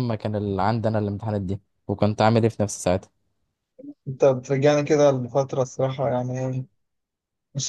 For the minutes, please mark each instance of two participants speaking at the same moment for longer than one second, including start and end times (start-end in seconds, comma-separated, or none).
none